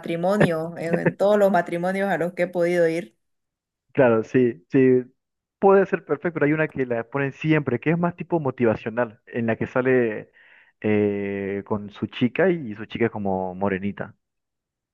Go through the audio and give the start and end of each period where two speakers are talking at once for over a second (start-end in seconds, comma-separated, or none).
none